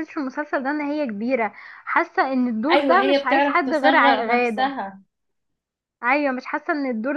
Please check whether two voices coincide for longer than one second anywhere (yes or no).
yes